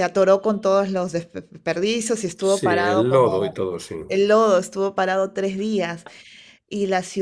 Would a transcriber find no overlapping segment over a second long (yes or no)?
no